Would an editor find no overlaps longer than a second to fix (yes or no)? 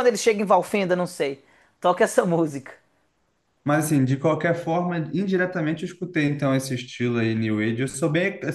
yes